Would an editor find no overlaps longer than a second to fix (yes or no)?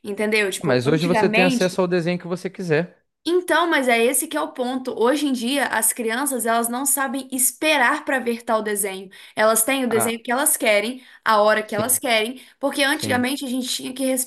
no